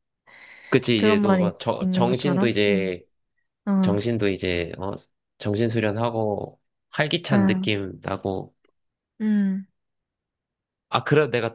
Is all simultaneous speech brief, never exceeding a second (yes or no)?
no